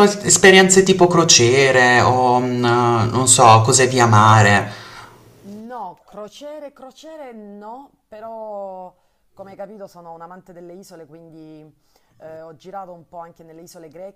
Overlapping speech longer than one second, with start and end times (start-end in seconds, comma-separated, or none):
none